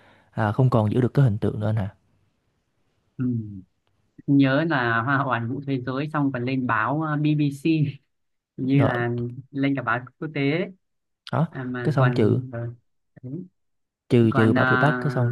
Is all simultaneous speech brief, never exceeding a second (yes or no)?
yes